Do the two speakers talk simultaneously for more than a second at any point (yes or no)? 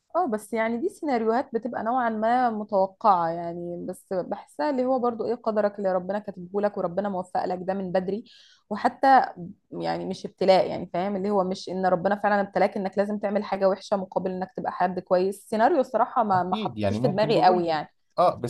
yes